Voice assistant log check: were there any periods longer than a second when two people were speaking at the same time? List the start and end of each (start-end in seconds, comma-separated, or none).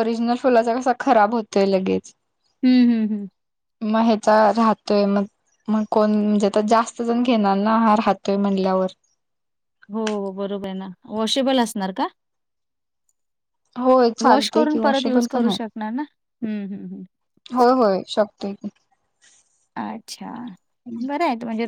14.2-15.7